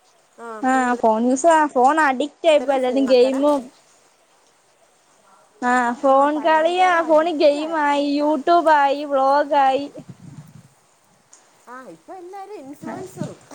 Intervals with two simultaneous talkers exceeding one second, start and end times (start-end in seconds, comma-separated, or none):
6.1-8.4